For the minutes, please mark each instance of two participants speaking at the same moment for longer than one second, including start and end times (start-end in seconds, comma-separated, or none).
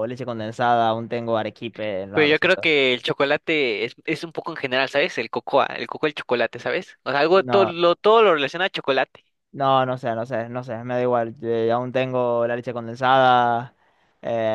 none